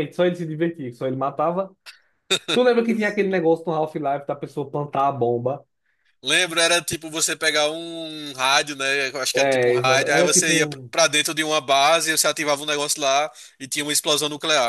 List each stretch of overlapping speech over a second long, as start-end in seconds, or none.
9.3-10.9